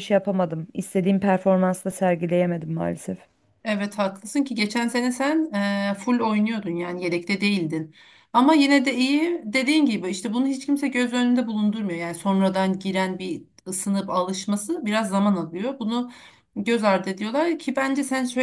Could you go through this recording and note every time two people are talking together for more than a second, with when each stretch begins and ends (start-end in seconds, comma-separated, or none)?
none